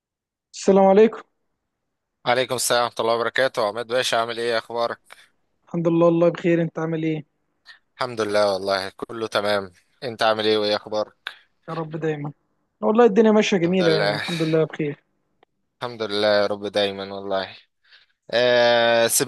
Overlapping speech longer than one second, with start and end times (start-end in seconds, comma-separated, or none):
none